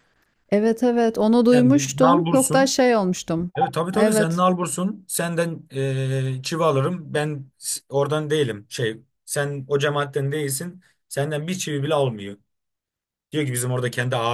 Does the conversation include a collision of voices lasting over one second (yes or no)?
yes